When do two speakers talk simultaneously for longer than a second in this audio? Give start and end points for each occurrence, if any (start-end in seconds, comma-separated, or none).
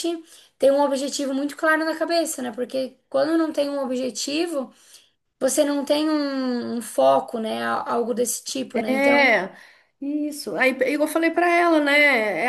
none